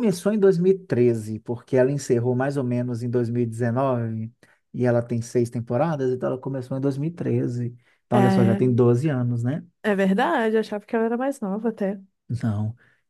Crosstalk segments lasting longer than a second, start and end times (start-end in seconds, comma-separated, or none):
none